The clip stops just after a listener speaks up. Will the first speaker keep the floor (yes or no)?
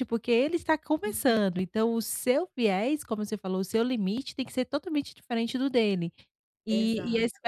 yes